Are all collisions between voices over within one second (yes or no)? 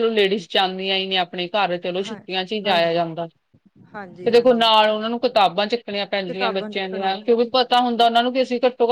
no